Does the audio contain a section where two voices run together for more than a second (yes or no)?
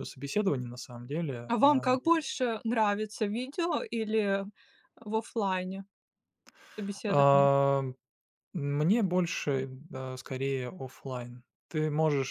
no